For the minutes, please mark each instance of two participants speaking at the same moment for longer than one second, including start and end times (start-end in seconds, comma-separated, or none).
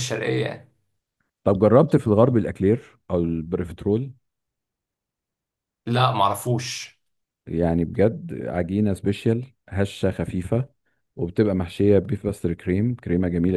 none